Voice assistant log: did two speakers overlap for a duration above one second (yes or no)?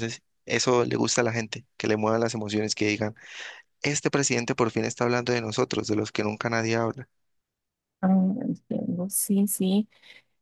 no